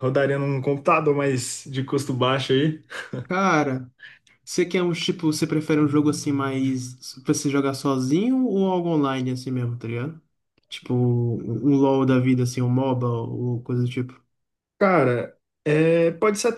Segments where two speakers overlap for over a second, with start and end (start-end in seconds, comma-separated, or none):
none